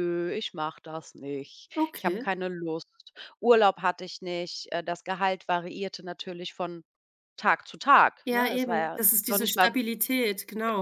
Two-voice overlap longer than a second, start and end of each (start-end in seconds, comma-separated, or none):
8.2-9.7